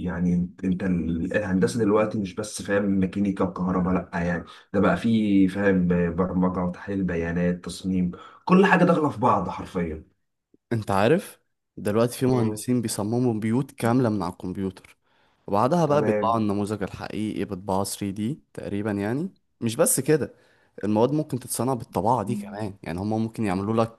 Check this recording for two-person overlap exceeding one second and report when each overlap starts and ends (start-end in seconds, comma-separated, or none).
none